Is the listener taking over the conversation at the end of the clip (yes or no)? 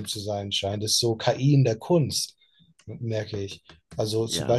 no